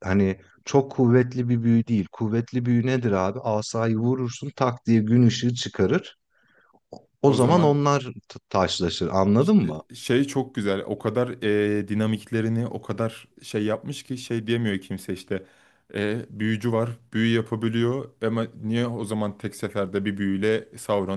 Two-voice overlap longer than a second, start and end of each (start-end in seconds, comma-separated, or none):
none